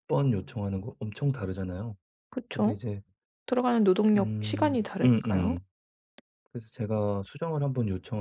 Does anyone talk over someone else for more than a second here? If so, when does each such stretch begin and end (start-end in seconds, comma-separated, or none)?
4.1-5.6